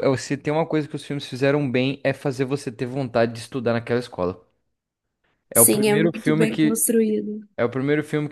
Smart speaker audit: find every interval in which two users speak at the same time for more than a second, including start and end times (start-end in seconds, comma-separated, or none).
5.5-6.9